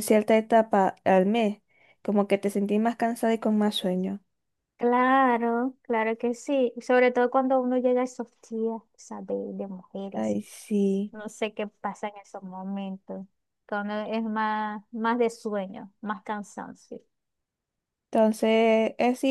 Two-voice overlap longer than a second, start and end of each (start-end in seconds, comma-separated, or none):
none